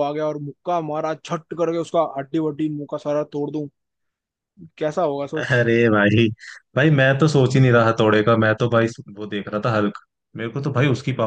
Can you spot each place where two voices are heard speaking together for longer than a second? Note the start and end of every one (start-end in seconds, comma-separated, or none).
none